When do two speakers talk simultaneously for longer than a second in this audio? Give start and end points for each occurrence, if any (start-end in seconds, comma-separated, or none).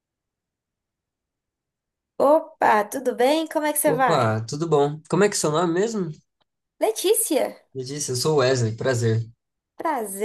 none